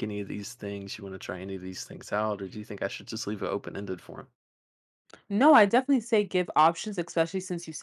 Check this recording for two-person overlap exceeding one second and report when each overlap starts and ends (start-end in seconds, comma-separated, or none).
none